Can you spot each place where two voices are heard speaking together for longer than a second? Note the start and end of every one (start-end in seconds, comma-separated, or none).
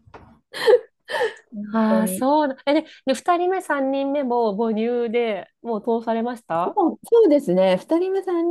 none